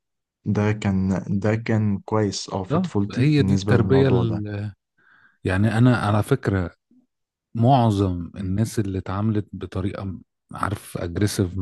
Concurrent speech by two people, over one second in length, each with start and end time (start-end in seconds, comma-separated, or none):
2.7-4.4